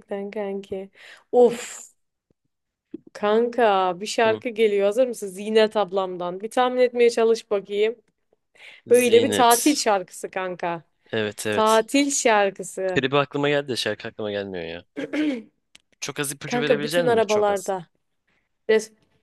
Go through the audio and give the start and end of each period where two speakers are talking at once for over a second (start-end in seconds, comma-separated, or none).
16.4-17.7